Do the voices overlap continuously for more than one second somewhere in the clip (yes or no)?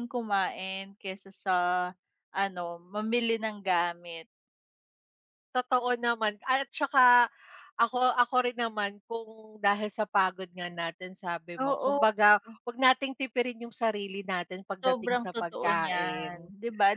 yes